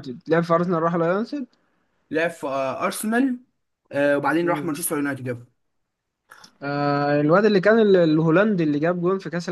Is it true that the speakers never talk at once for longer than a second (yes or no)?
yes